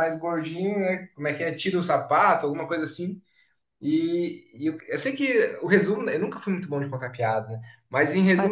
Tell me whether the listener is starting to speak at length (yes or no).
no